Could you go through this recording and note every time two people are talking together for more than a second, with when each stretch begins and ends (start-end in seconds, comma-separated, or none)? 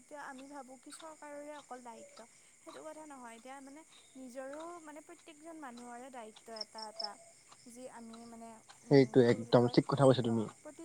none